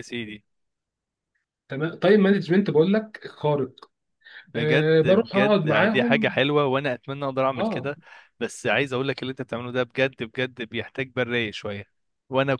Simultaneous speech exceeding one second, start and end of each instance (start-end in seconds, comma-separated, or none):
4.6-6.4